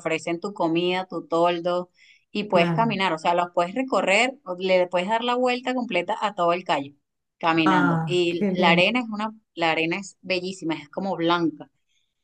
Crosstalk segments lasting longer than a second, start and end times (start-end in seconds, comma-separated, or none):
7.7-8.9